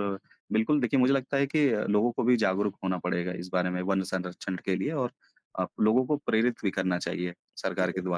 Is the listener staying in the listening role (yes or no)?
no